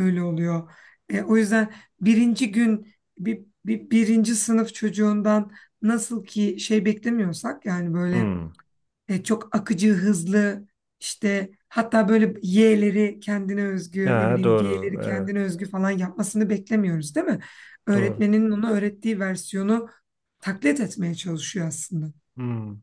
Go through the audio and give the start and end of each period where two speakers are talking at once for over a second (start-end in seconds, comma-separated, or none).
14.0-15.3